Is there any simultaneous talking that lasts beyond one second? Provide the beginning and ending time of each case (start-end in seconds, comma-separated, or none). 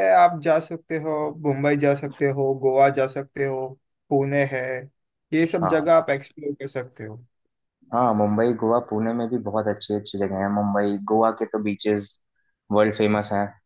none